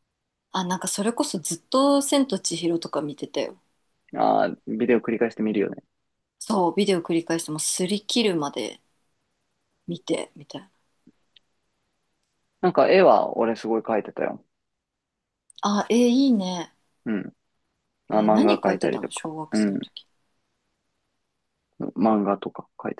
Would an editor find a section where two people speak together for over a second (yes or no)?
yes